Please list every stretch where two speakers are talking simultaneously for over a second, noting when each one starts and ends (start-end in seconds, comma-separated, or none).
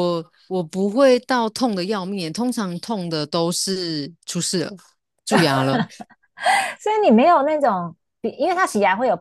none